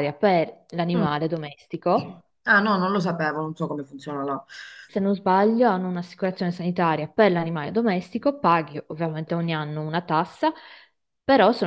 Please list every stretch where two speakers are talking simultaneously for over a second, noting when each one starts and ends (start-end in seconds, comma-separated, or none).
none